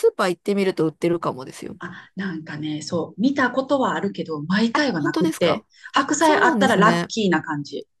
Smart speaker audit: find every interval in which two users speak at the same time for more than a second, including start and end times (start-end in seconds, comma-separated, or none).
4.7-7.1